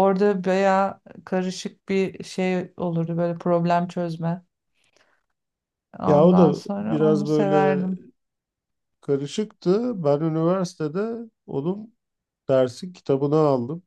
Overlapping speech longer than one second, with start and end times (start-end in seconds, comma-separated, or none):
6.1-7.9